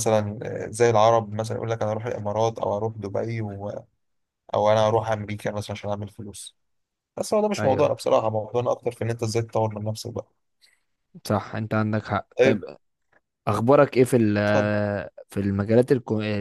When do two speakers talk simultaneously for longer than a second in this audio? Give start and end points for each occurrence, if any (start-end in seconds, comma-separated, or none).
none